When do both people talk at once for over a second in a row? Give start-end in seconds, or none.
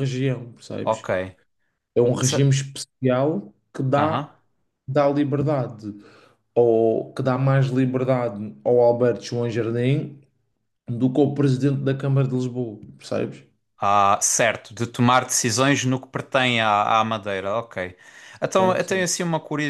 none